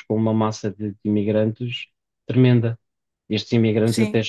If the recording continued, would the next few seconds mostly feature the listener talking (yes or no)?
yes